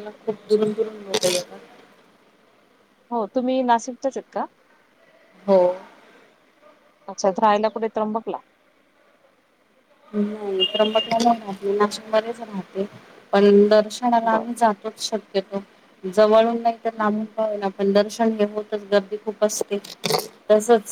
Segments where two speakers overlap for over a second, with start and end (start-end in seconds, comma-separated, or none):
none